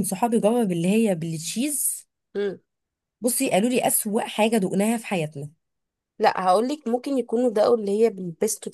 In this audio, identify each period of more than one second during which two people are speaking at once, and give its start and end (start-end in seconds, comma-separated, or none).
none